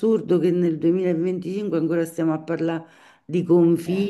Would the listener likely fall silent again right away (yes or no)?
yes